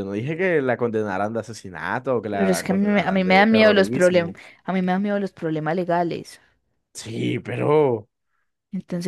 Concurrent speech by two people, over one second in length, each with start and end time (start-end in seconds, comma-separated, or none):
2.3-4.4